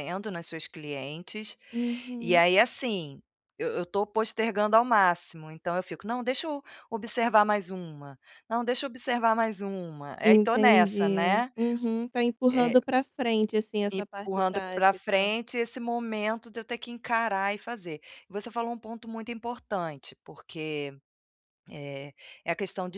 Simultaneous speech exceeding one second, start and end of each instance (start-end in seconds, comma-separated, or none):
10.2-11.5, 13.9-15.3